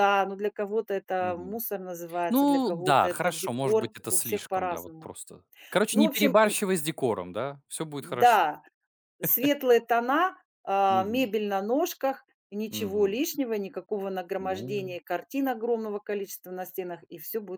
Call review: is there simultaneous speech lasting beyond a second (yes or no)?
yes